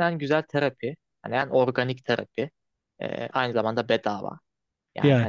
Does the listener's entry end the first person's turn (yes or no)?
no